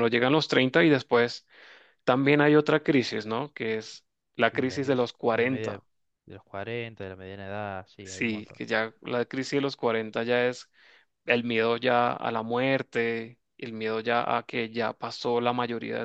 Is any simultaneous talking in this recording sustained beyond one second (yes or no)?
yes